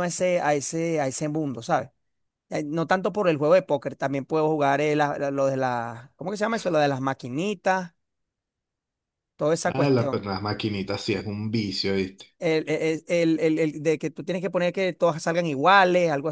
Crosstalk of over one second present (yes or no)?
no